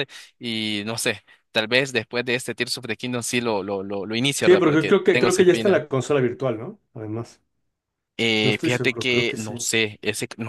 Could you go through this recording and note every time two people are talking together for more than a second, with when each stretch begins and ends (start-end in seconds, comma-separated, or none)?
4.4-5.8, 8.4-9.7